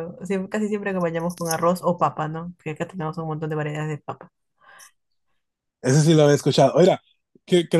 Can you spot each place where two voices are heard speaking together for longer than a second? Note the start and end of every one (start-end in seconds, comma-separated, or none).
none